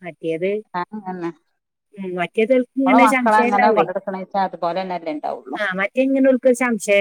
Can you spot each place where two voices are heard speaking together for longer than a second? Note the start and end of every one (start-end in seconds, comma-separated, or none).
2.2-3.9